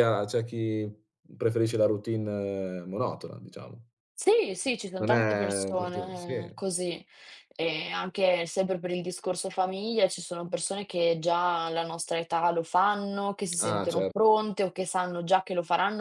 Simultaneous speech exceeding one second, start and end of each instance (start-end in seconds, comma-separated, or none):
5.0-6.3